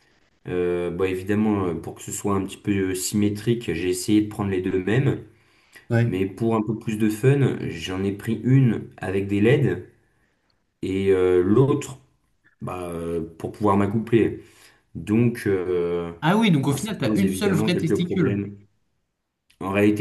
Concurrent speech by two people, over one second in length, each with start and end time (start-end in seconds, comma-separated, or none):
16.7-18.4